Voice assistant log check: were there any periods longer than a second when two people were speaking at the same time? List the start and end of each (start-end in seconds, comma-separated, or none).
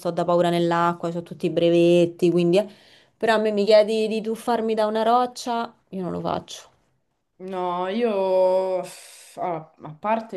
none